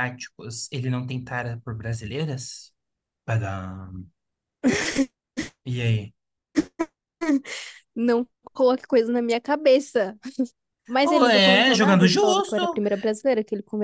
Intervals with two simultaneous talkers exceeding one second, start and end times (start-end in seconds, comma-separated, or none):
11.0-12.8